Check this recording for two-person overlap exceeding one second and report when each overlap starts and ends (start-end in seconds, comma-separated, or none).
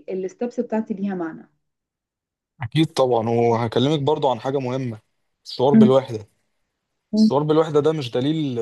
none